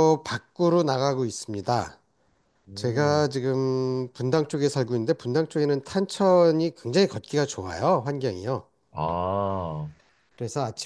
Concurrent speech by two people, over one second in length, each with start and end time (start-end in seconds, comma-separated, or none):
none